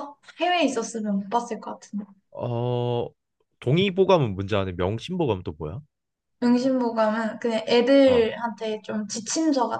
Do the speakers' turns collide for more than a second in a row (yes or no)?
no